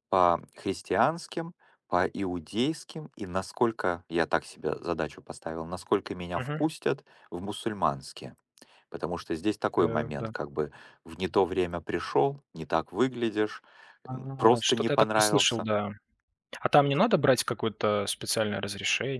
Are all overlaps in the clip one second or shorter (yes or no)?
no